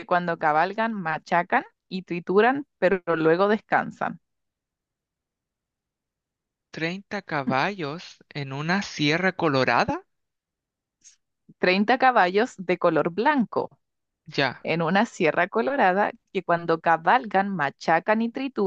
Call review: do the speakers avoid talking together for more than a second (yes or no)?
yes